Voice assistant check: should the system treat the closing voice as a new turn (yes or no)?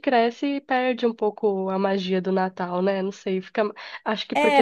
yes